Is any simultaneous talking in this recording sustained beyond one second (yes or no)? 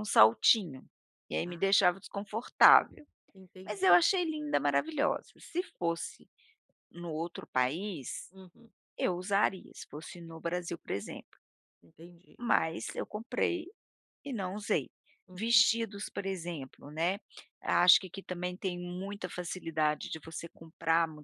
no